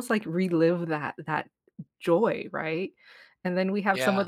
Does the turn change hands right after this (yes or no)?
no